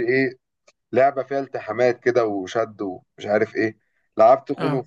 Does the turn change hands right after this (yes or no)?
no